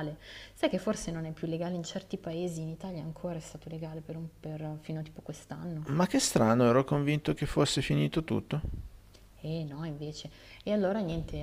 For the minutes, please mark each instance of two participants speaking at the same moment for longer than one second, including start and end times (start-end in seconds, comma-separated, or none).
none